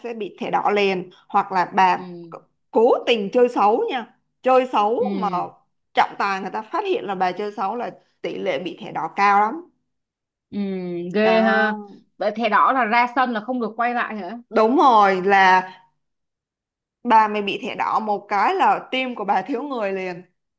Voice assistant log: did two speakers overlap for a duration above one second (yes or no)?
no